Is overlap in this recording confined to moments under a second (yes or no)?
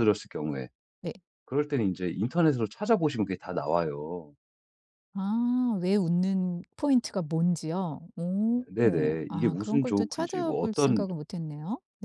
no